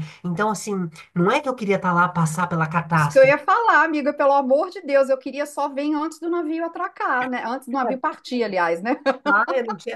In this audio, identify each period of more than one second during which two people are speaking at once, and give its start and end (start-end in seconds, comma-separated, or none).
none